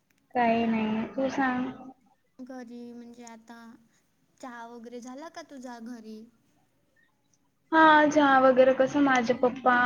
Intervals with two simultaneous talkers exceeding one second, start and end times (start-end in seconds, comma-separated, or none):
none